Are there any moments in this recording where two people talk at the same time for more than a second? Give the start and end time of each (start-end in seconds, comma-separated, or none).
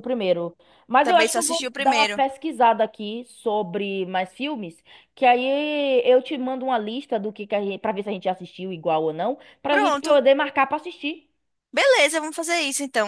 1.0-2.2